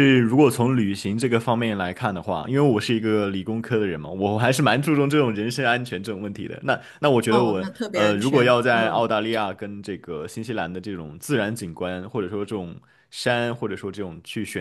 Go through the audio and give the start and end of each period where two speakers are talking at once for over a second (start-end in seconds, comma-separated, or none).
7.3-9.1